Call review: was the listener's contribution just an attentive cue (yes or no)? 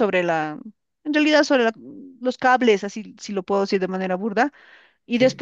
yes